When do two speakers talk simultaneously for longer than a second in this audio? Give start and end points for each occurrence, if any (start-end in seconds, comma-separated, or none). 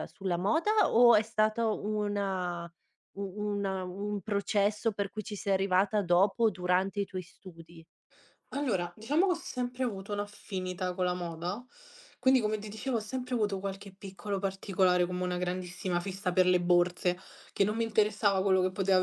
none